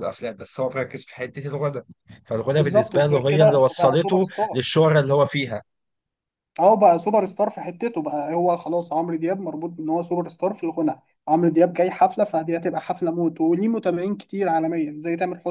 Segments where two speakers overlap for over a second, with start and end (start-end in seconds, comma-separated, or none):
2.5-4.6